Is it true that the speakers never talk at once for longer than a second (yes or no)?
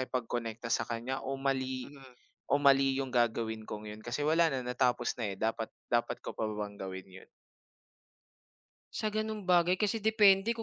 yes